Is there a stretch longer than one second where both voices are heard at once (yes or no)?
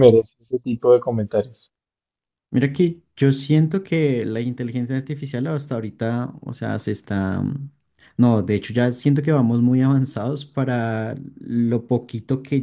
no